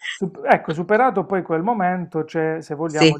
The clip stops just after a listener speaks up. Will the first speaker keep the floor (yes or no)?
yes